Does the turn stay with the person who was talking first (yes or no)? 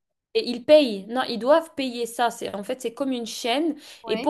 yes